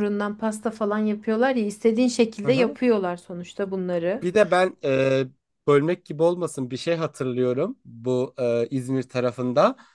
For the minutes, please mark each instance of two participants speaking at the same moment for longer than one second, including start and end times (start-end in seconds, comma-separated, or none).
none